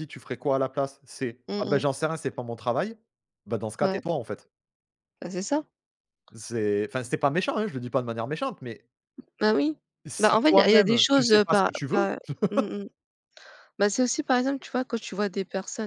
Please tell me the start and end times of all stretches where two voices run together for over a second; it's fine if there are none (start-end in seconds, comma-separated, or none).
10.2-12.1